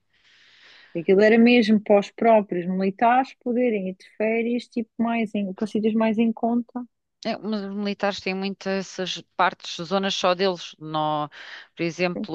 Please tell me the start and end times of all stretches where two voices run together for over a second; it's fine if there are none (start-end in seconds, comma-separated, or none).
none